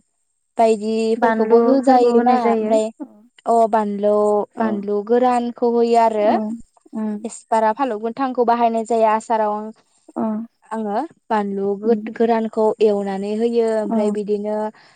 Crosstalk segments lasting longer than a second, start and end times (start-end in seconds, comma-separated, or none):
1.2-2.9